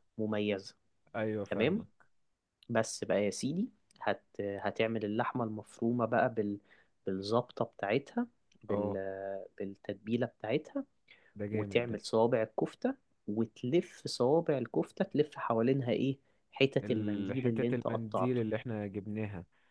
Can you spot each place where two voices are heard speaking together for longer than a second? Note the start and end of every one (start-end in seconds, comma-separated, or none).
16.8-18.4